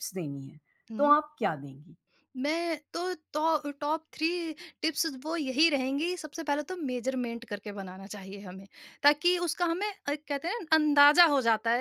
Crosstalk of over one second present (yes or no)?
no